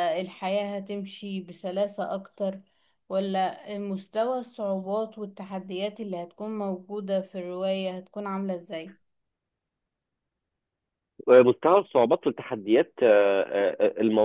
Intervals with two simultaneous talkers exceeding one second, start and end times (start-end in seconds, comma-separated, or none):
none